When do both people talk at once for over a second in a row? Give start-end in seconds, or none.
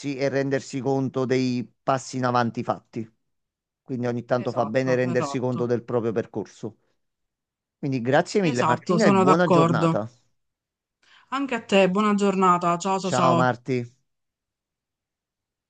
4.3-5.7, 8.4-10.0